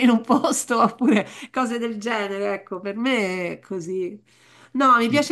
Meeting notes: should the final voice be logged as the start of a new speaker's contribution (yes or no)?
no